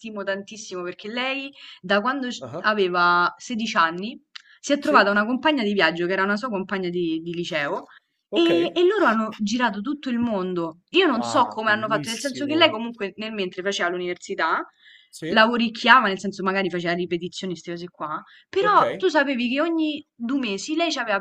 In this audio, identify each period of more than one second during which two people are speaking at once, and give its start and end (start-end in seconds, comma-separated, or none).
11.2-12.7